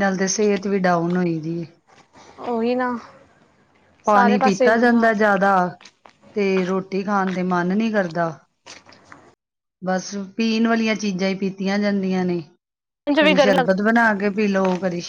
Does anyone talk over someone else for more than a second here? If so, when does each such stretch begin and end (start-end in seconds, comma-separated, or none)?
4.1-5.4